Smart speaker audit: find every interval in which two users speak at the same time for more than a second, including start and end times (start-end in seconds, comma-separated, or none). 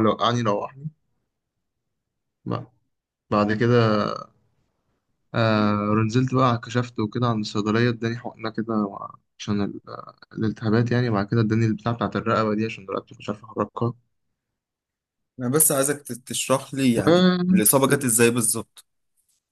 none